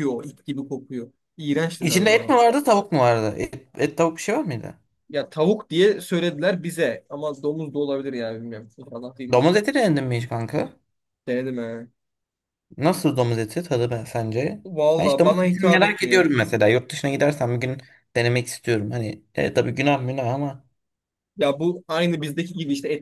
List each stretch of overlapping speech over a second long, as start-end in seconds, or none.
14.6-16.3